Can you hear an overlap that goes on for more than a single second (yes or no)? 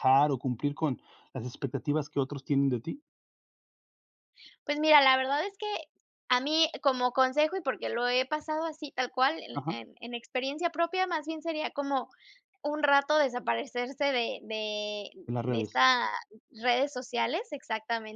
no